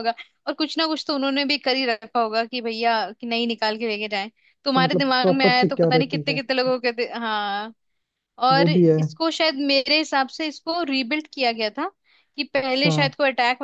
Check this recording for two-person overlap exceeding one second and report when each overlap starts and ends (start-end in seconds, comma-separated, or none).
4.8-6.4